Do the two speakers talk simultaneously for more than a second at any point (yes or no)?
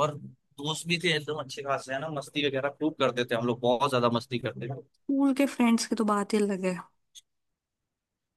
no